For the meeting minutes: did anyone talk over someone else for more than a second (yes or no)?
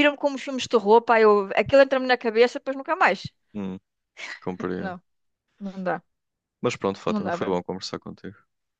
no